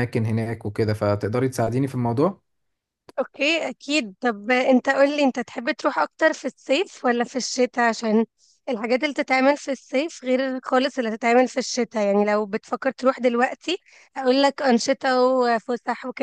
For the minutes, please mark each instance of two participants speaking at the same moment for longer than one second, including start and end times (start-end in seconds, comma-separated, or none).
none